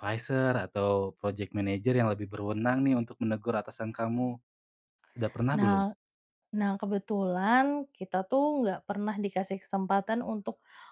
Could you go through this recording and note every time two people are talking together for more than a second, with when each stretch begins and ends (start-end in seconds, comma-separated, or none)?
none